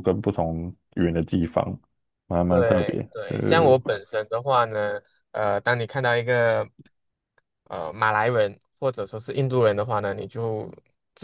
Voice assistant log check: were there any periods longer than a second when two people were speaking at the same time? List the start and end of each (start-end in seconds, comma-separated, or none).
2.5-3.8